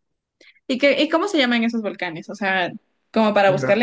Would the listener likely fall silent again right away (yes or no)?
yes